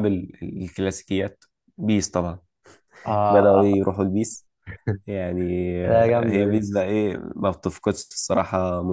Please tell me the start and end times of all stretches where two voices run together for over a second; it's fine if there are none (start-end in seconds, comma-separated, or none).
none